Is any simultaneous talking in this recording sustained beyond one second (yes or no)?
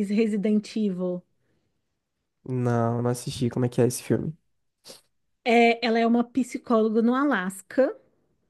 no